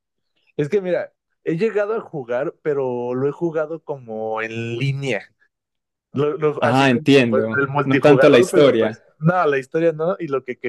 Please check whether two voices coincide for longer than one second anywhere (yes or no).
yes